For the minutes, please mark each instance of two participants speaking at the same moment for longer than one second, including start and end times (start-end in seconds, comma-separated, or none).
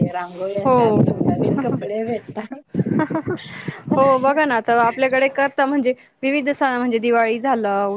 none